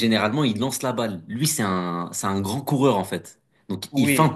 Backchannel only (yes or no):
yes